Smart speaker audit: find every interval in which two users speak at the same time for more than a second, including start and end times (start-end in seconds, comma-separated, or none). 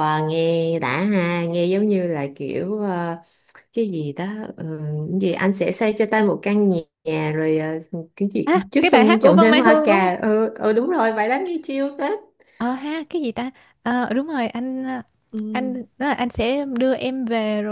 8.4-10.1